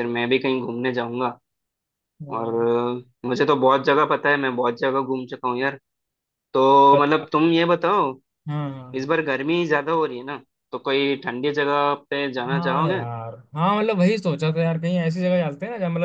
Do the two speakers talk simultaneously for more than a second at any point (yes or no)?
no